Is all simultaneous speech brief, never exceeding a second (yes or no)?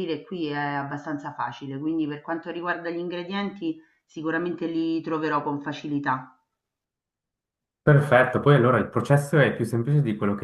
yes